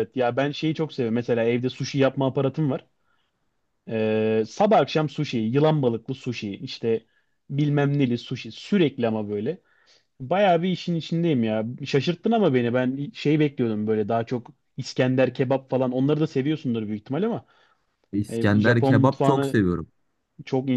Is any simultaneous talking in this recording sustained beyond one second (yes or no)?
yes